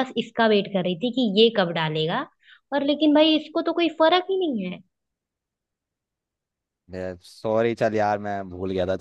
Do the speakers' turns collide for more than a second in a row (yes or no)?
no